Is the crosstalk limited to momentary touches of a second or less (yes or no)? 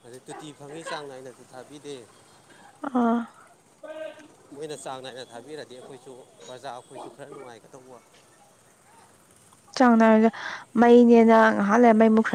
yes